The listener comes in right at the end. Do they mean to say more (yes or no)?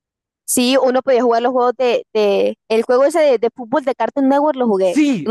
yes